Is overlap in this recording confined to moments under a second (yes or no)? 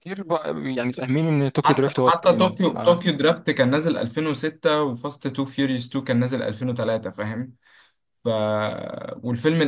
no